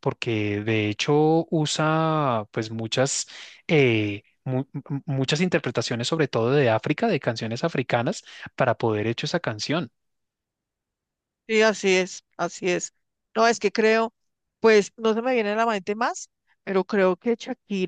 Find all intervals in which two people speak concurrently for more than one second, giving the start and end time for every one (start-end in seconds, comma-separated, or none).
none